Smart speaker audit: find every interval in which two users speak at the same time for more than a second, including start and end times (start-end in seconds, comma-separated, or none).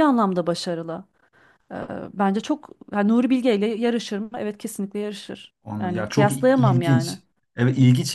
5.6-7.2